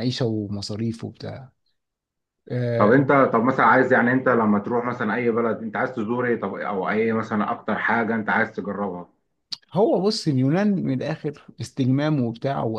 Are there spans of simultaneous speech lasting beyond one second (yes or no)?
no